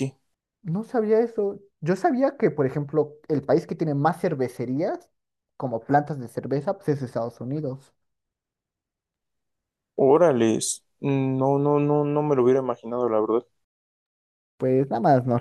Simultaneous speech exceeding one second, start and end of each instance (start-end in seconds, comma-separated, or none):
none